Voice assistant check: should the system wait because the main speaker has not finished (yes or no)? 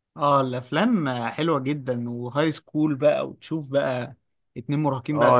no